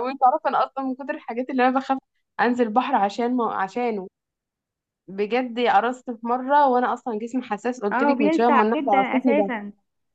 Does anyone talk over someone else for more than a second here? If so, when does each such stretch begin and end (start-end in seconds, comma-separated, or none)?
7.9-9.5